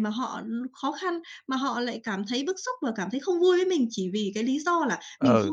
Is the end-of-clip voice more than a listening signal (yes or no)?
no